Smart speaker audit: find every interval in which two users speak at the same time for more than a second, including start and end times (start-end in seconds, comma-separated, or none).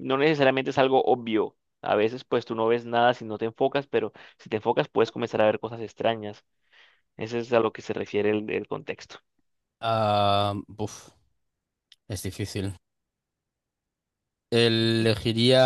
none